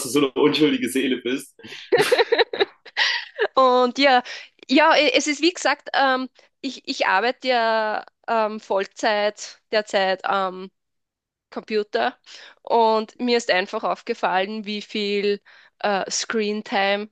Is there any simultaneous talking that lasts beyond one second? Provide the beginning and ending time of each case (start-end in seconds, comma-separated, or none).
none